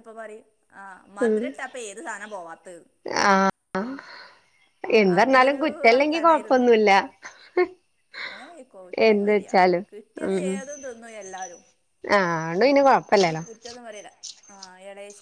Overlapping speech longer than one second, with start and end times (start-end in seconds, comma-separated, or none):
5.2-6.6